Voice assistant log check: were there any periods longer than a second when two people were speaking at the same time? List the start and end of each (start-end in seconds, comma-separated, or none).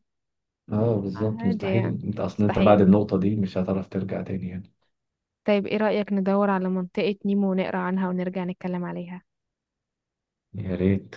1.1-2.9